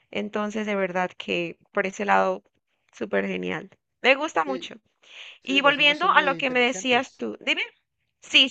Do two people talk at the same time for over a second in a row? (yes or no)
yes